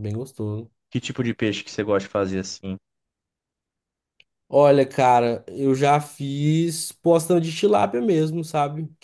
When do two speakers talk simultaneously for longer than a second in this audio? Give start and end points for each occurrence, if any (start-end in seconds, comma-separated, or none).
none